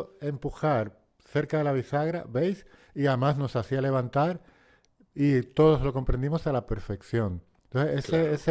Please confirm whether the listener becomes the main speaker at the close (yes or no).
no